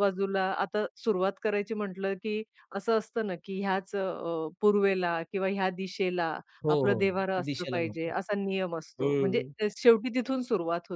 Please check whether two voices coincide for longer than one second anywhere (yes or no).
yes